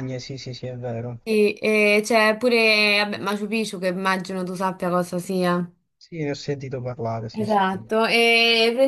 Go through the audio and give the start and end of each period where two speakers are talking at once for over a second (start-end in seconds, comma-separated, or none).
none